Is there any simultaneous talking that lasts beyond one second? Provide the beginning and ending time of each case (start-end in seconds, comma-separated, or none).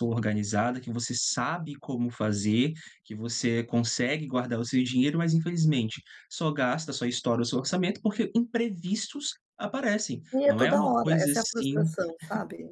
10.3-11.8